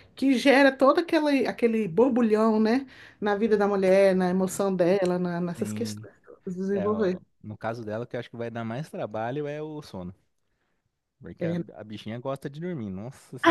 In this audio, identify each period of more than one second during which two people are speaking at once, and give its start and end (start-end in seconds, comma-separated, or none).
none